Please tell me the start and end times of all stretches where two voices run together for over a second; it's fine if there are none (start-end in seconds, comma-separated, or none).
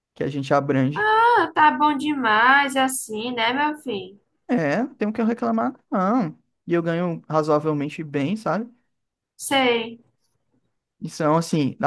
none